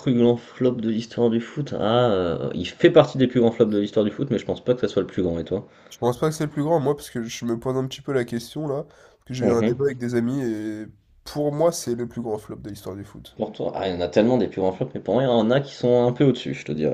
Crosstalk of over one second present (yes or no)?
no